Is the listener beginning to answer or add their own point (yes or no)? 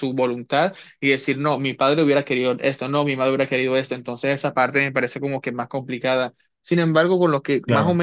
no